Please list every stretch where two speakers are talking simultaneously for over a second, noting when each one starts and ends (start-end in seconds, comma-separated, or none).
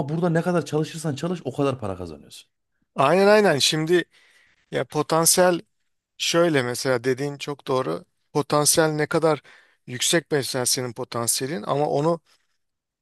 none